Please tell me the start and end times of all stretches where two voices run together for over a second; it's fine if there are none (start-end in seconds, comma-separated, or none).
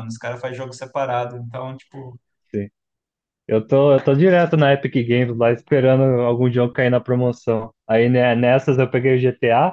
none